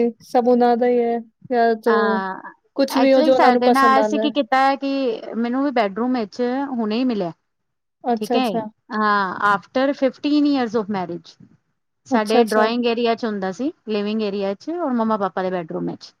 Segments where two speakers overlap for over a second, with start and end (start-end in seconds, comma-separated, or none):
none